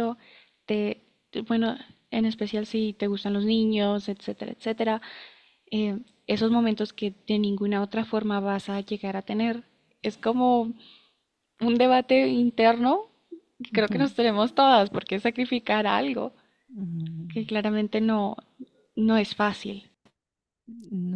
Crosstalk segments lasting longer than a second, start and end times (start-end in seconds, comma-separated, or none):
none